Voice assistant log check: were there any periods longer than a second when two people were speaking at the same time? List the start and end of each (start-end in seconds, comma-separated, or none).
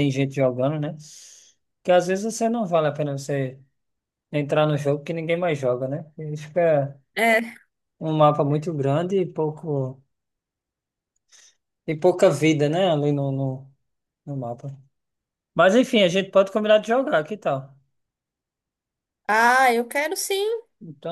none